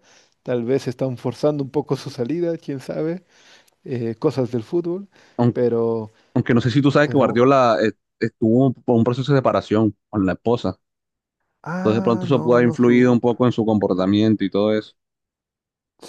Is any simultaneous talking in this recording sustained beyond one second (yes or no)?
yes